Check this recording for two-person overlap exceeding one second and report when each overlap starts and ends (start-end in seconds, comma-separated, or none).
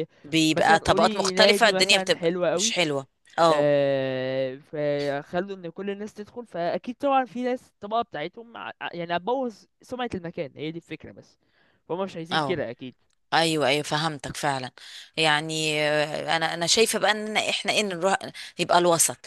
0.5-2.8